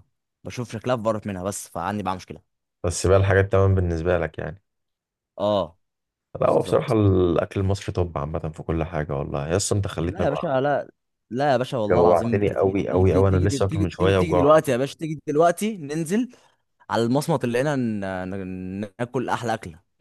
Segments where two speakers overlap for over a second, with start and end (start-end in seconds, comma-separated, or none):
11.9-14.5